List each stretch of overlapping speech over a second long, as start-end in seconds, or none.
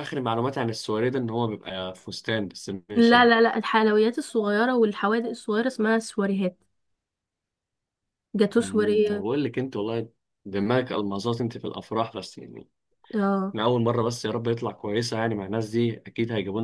none